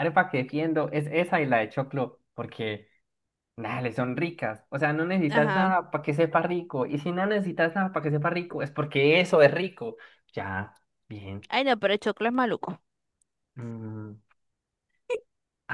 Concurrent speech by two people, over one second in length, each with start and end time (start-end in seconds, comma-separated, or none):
none